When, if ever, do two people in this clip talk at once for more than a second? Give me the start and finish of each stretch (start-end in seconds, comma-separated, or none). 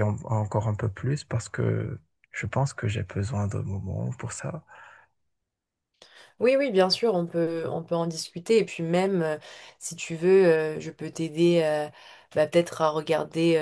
none